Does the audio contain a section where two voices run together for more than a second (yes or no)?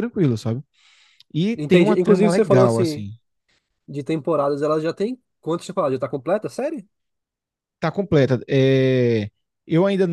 yes